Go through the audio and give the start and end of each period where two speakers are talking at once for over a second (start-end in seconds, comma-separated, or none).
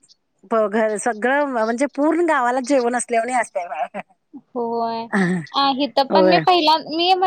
none